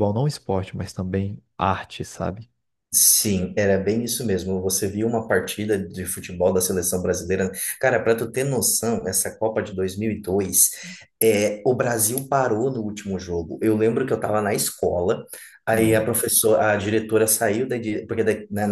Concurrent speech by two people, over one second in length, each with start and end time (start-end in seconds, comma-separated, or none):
none